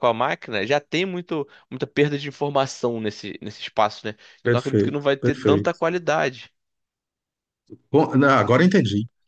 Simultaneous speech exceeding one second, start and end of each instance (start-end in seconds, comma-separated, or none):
4.4-5.8